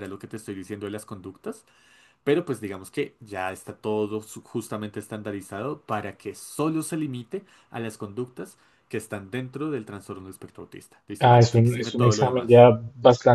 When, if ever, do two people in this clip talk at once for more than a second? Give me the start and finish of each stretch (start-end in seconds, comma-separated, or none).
11.2-12.7